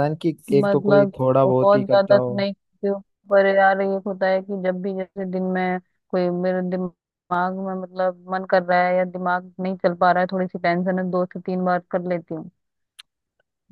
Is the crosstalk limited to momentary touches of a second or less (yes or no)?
no